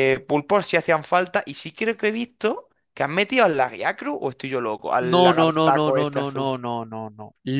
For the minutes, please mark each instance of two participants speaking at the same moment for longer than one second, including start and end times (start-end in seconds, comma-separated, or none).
5.0-6.5